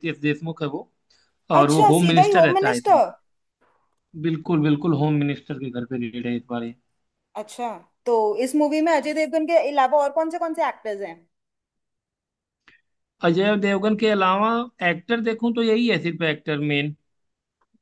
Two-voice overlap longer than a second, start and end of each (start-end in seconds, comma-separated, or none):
1.6-3.0